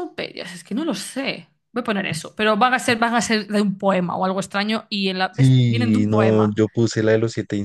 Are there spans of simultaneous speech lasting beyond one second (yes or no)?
yes